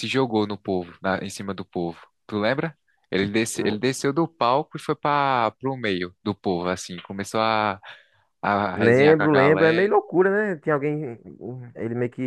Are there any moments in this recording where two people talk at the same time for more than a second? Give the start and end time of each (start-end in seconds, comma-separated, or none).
8.8-9.9